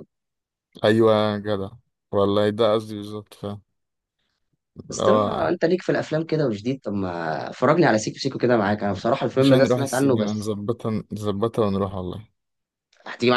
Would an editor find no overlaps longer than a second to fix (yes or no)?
no